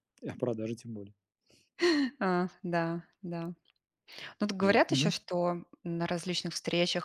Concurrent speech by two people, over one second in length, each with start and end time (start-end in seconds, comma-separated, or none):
none